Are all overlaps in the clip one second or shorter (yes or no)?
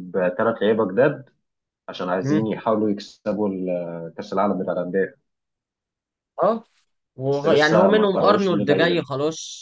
no